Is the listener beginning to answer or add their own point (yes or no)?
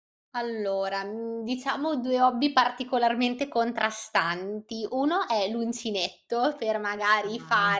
no